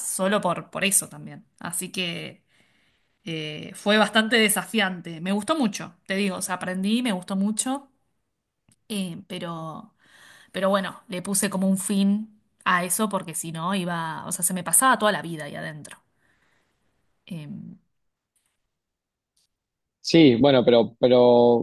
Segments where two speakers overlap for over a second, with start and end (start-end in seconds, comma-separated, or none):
none